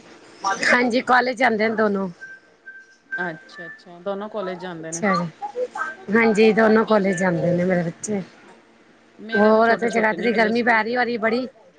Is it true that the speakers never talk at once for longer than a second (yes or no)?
no